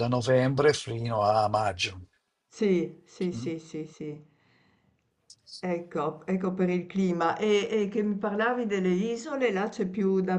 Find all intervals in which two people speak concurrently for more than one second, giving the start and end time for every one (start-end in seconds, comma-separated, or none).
none